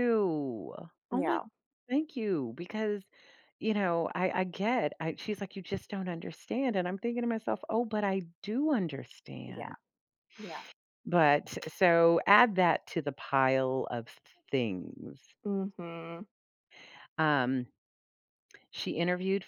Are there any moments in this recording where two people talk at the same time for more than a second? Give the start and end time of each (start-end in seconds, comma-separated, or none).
none